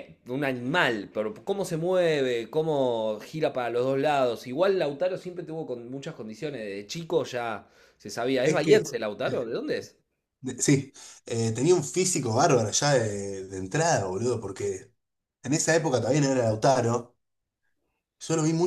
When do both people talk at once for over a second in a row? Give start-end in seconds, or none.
none